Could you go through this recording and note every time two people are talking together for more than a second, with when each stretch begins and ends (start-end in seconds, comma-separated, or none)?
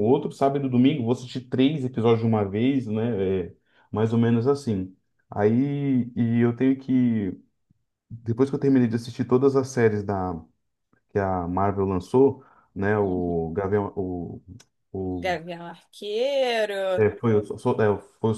none